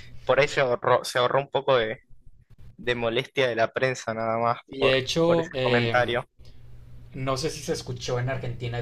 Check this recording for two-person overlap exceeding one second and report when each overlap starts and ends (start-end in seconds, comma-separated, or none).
4.7-6.2